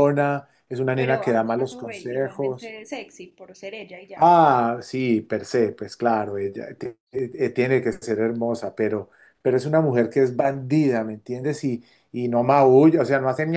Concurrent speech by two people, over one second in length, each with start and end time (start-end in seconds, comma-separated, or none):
0.9-2.8